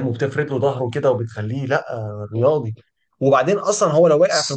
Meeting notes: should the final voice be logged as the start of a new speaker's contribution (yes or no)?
yes